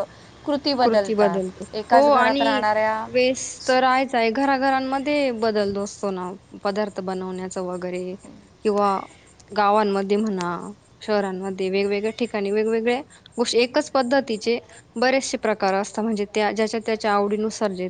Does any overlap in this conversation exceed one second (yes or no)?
yes